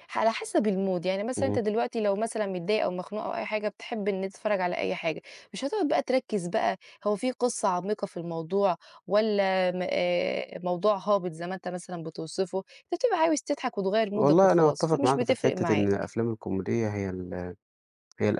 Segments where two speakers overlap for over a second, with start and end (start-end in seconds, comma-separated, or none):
14.1-16.1